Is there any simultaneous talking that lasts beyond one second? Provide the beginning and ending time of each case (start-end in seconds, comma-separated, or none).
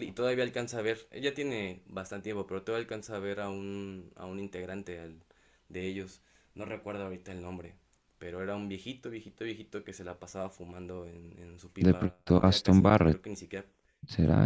11.8-13.2